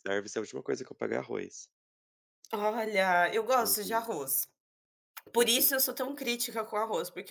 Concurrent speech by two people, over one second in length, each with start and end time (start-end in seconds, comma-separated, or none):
none